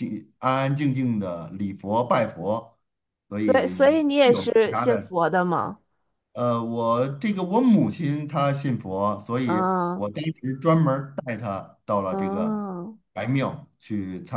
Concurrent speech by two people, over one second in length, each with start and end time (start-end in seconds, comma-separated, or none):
3.4-5.1